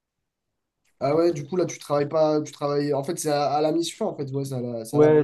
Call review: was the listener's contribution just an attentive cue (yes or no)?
no